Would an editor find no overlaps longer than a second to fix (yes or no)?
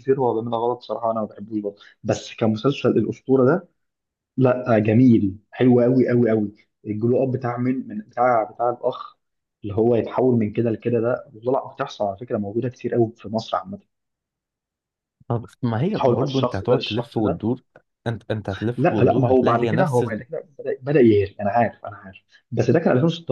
no